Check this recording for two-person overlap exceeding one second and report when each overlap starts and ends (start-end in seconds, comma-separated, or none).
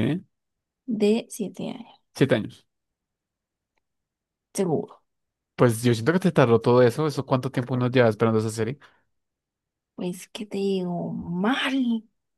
none